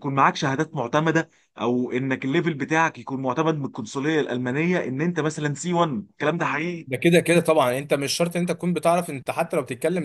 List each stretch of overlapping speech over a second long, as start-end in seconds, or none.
none